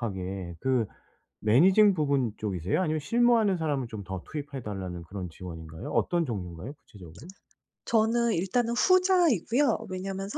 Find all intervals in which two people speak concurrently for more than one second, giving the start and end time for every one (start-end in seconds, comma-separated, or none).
none